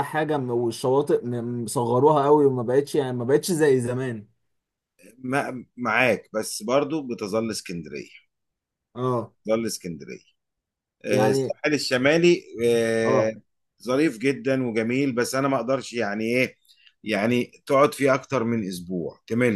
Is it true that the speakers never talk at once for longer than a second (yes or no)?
yes